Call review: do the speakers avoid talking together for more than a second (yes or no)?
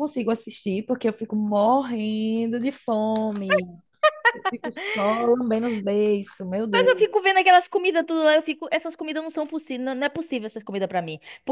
yes